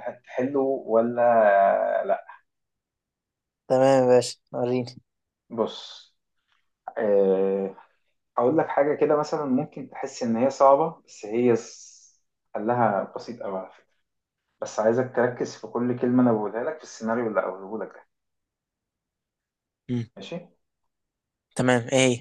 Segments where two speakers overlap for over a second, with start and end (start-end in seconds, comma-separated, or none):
none